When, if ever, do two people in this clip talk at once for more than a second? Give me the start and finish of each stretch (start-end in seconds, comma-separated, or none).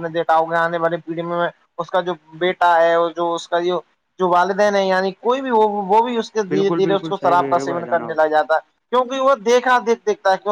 6.5-8.2